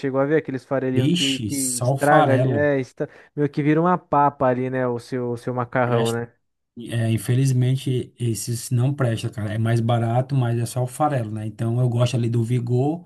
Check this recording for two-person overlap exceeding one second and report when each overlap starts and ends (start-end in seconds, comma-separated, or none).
0.9-2.7